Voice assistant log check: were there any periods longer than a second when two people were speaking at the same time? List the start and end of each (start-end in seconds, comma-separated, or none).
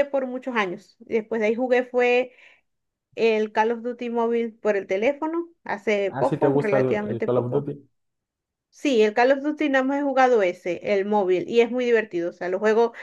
6.1-7.7